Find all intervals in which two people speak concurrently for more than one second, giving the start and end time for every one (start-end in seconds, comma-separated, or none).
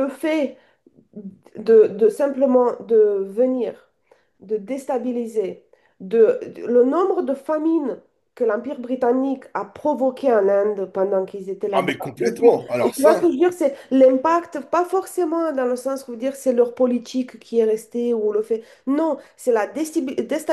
11.7-13.2